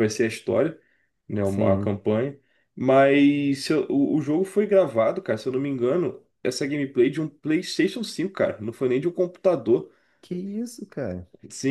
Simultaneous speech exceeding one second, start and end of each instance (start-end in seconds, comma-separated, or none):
none